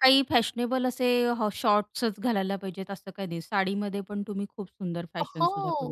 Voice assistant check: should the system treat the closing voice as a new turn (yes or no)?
yes